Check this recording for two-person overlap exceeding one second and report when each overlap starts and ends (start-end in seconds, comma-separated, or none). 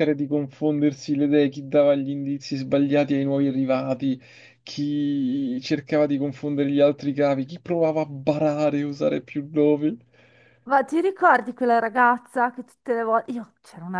none